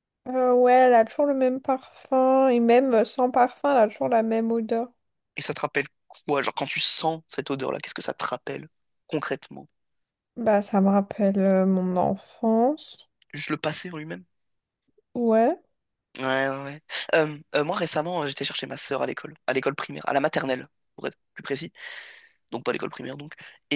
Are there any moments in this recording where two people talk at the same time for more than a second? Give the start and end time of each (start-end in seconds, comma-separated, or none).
none